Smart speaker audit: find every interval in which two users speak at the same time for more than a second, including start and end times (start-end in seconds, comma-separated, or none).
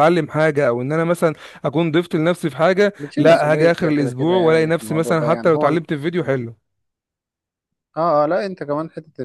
3.0-5.8